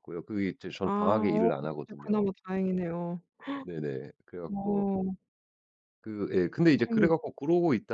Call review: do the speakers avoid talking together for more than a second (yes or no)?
no